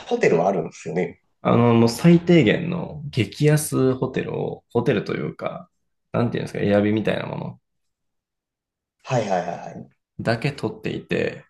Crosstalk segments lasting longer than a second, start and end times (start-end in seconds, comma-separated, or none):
none